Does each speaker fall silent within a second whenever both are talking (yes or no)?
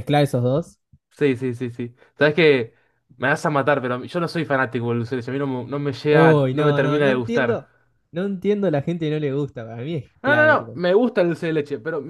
no